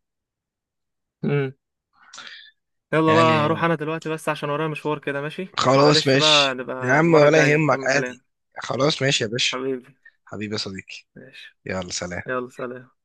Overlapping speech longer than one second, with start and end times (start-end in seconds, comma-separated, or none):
5.6-8.2